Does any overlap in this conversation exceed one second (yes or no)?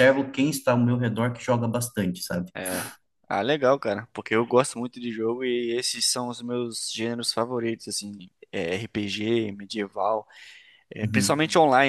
no